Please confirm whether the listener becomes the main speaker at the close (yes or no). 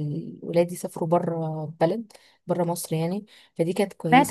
no